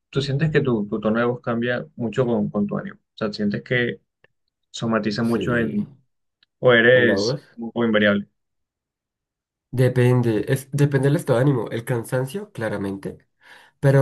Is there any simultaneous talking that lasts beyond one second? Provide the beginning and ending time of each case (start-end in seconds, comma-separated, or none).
none